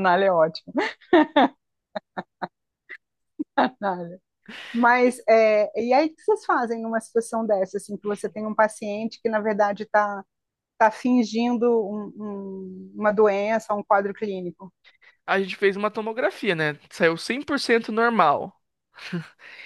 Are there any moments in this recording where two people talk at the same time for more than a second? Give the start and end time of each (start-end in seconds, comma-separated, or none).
none